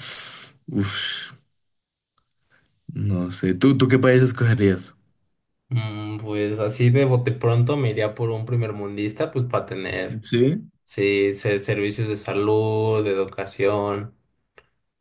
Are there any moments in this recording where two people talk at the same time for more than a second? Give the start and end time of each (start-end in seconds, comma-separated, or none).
none